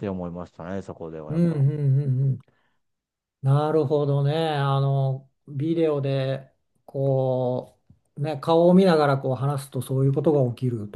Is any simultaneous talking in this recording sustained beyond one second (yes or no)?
no